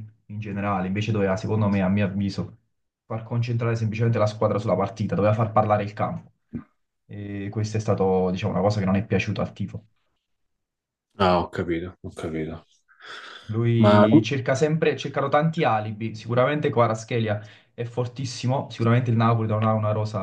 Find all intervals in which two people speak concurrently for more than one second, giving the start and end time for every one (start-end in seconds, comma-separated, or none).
none